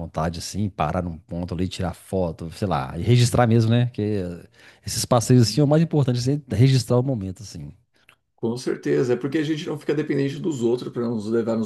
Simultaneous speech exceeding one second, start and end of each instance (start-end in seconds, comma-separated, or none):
none